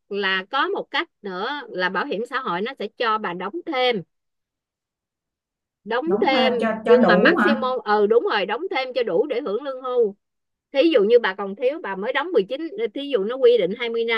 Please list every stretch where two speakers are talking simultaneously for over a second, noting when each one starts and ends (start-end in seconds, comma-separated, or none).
6.0-7.6